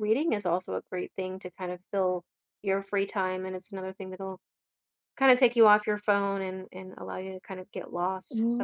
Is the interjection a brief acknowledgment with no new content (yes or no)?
no